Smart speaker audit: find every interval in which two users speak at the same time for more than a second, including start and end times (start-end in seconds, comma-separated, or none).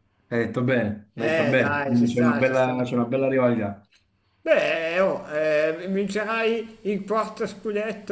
1.1-2.9